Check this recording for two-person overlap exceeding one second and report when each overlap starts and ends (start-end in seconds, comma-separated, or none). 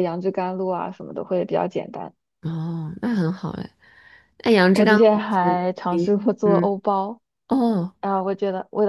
4.7-6.7